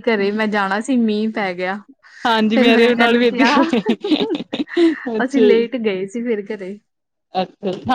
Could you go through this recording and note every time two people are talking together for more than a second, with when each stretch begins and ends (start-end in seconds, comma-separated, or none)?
none